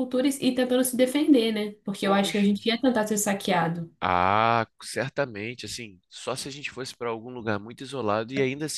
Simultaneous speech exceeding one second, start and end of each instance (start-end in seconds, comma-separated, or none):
none